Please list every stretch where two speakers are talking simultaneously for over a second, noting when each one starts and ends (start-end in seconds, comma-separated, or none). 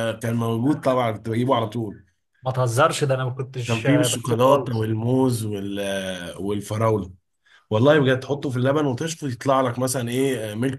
3.6-4.9